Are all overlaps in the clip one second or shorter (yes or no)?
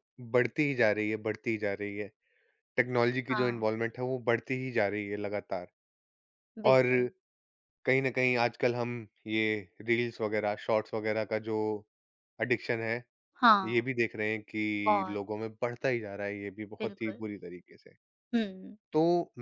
yes